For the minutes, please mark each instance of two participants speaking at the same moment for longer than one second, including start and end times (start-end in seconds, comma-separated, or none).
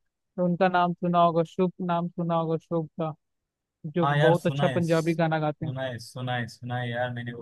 4.0-5.7